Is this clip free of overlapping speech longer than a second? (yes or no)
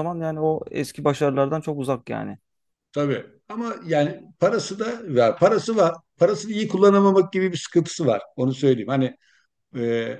yes